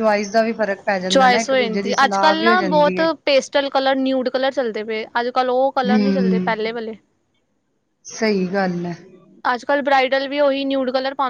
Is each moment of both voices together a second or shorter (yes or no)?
no